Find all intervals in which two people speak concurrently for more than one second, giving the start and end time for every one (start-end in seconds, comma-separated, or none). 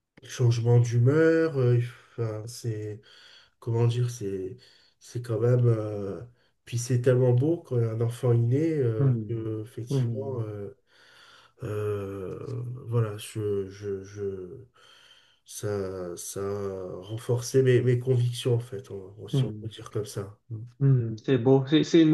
9.0-10.4